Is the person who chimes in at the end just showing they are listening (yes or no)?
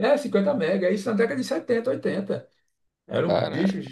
yes